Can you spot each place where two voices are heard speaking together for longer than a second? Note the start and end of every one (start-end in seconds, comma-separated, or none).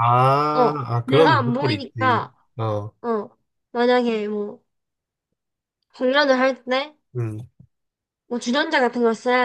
0.5-2.4